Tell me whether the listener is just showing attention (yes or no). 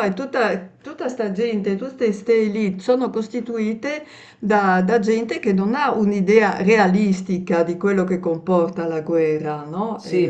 no